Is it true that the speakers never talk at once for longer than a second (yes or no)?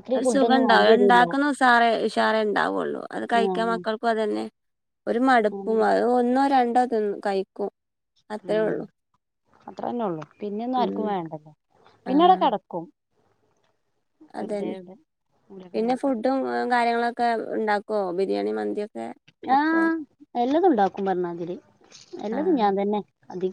yes